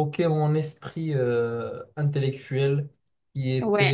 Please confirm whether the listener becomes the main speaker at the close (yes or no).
no